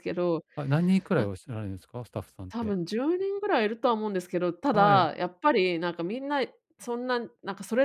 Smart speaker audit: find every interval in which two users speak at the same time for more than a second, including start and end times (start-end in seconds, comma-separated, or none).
none